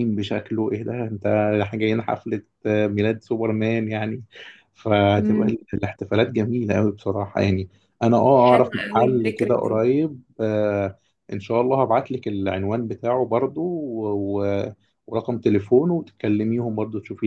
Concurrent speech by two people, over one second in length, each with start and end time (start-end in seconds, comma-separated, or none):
8.3-9.8